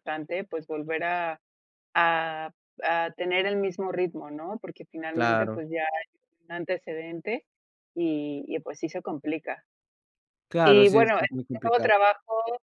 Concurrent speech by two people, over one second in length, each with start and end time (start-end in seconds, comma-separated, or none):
10.6-11.9